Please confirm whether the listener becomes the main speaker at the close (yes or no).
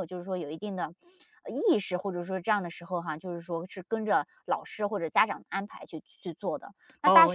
yes